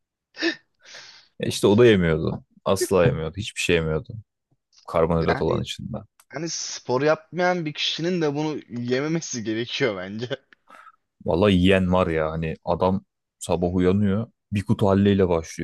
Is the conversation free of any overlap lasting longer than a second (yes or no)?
yes